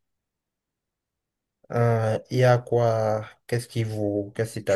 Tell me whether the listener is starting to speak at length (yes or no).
yes